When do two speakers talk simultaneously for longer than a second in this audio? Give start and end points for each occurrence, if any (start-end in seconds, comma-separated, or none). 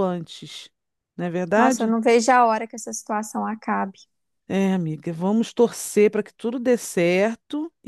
none